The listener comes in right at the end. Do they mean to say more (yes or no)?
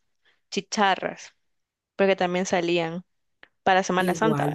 yes